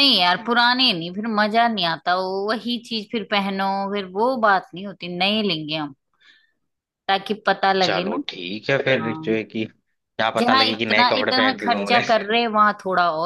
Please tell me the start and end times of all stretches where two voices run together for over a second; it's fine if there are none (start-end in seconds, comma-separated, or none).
10.4-12.0